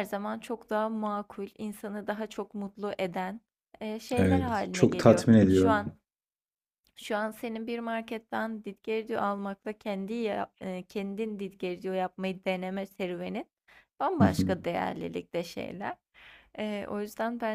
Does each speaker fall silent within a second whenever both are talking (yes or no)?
no